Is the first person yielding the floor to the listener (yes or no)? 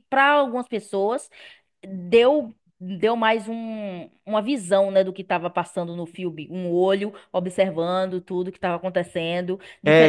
yes